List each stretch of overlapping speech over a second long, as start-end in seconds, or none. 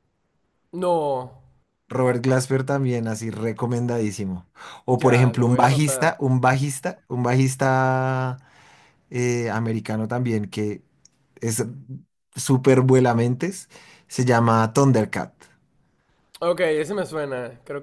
4.9-6.2